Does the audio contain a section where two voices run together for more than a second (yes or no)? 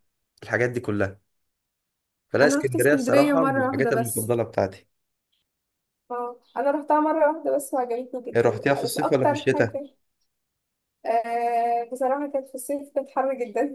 yes